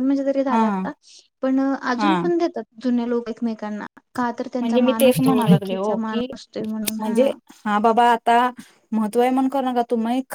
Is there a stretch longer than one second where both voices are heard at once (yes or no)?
yes